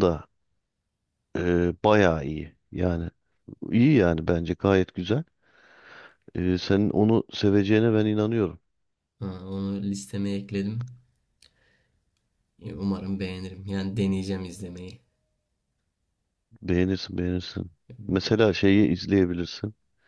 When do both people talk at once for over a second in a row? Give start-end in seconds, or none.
none